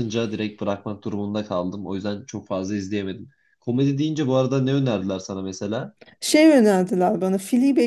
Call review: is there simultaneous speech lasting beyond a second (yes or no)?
no